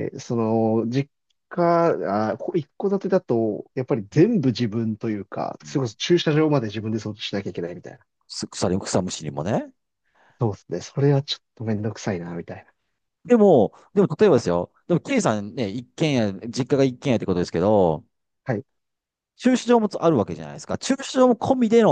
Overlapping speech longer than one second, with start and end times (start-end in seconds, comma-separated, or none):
none